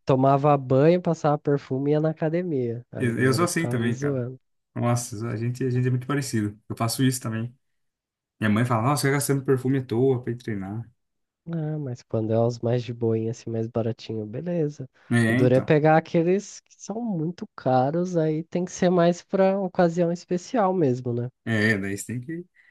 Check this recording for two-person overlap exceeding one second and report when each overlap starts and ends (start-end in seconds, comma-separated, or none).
3.0-4.2